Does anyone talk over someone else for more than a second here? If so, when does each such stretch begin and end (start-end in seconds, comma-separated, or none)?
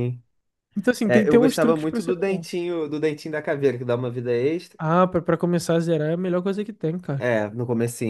1.0-2.5